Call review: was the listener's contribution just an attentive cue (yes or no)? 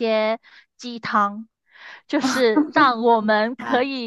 yes